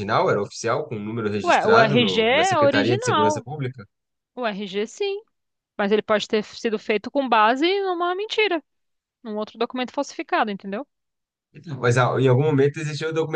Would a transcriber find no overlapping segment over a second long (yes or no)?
no